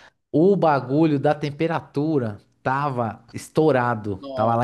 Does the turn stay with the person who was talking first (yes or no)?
yes